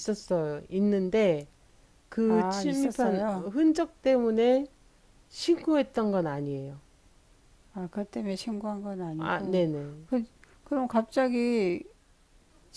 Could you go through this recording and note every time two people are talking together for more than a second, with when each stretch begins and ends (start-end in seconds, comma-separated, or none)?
2.2-3.5